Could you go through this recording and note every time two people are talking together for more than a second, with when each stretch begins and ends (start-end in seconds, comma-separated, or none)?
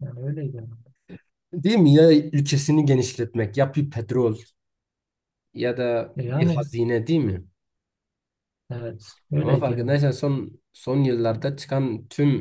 none